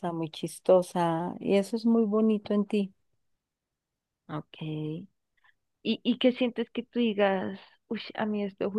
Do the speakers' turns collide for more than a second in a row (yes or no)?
no